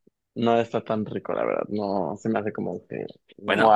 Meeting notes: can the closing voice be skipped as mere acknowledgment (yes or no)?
yes